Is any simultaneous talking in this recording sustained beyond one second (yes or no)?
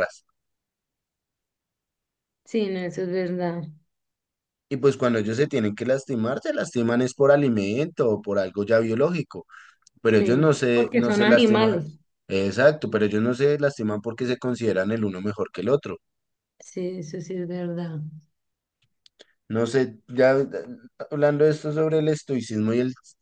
yes